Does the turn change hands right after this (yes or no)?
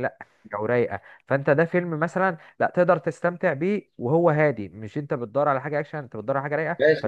yes